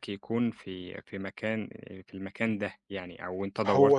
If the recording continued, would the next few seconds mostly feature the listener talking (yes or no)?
yes